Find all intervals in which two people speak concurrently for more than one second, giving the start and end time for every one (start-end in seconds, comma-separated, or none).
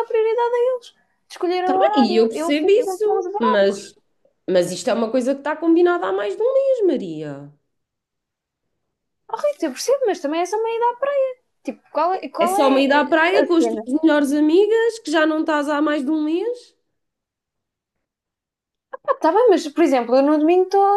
1.6-3.6, 12.4-13.8